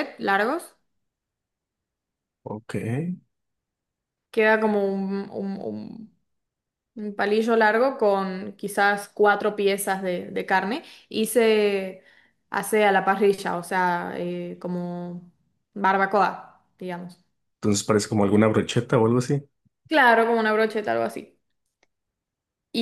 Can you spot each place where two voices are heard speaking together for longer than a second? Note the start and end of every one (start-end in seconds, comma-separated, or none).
none